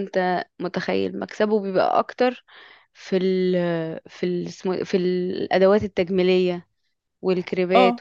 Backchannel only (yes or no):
no